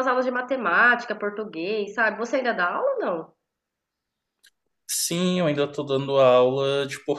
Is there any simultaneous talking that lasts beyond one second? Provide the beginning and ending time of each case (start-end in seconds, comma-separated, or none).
none